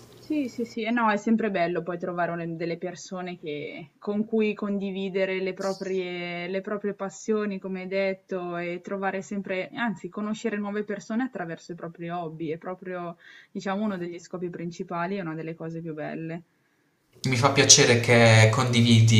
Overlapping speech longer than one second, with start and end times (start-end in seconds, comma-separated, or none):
none